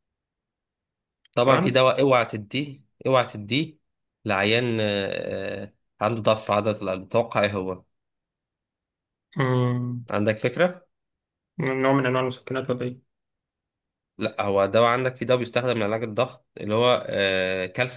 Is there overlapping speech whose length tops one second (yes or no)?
no